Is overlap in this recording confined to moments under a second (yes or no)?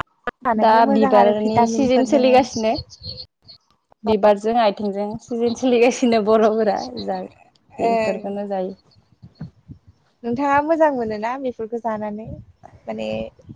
no